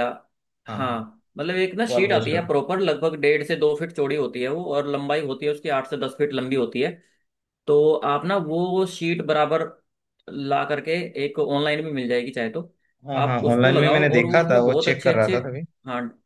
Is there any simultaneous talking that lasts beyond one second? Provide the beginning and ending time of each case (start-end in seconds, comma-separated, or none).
13.1-15.4